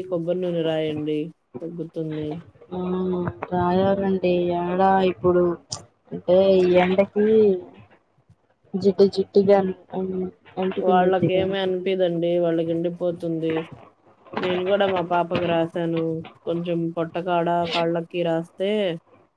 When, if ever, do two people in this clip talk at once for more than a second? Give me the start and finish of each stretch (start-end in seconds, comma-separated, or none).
none